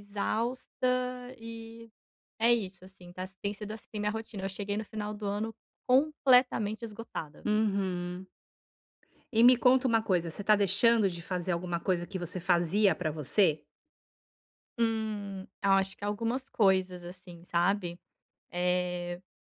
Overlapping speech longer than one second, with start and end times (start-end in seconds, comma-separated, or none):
none